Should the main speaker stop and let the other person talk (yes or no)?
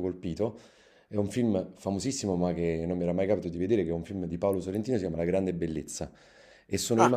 no